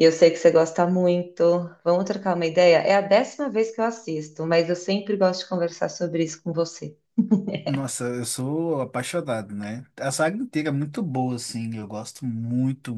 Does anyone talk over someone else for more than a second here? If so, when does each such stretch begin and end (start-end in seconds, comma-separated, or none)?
none